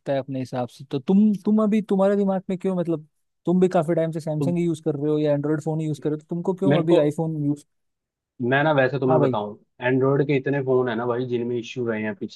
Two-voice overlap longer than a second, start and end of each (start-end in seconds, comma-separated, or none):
none